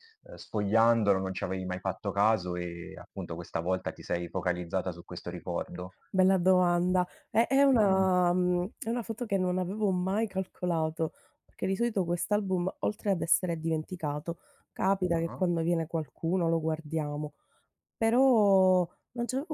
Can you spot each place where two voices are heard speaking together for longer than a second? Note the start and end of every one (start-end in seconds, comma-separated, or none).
none